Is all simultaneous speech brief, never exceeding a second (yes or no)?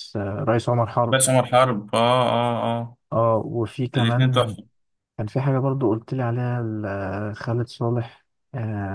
yes